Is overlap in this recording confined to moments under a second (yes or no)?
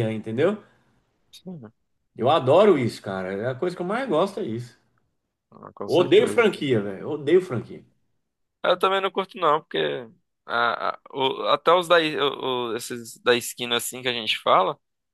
yes